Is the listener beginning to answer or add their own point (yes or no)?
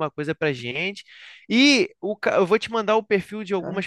no